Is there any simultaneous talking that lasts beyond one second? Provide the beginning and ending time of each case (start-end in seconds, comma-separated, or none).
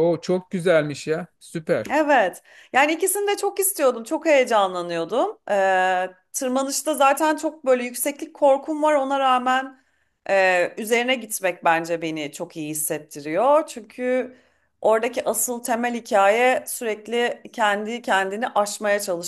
none